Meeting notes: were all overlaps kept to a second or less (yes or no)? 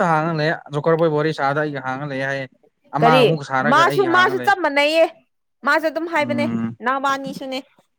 no